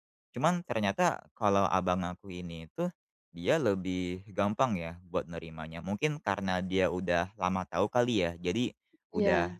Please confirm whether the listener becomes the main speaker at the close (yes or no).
no